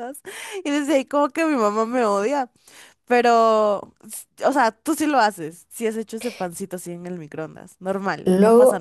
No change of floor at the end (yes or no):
no